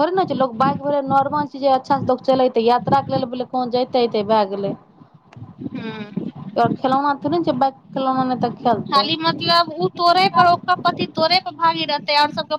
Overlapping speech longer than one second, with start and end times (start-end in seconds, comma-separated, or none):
none